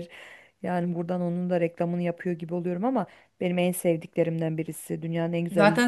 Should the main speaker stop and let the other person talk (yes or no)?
yes